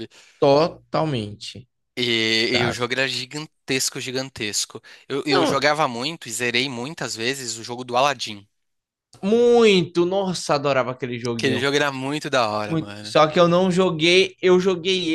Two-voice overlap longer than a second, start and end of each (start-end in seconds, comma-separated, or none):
none